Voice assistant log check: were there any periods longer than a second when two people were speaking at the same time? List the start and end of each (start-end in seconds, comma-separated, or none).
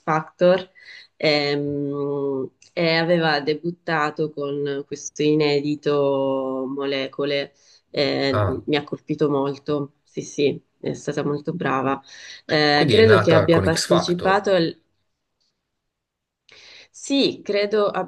12.7-14.5